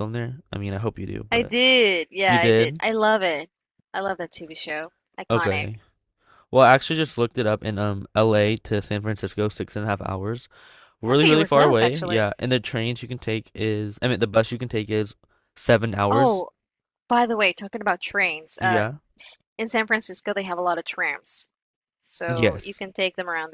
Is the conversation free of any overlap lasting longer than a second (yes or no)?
no